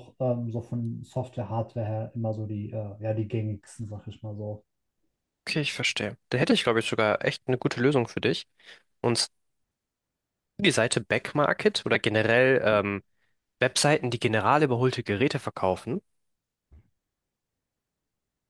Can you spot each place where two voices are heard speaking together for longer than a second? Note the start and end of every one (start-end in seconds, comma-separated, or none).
none